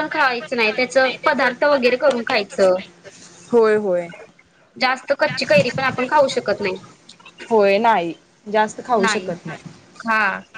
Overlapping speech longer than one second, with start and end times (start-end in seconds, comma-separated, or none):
none